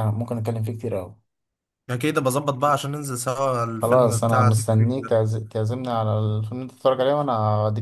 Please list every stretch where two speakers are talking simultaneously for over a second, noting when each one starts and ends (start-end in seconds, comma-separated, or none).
3.8-5.2